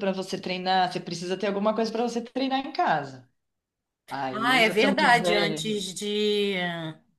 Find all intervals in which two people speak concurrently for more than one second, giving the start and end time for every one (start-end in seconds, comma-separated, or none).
4.3-5.6